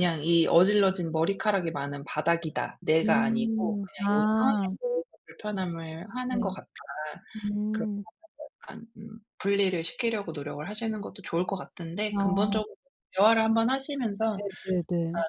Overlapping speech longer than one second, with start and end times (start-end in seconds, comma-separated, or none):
3.0-4.7